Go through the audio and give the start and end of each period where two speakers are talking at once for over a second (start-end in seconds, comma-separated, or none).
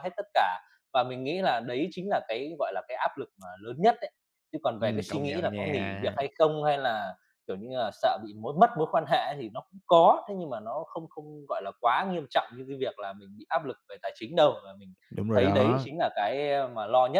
4.8-6.2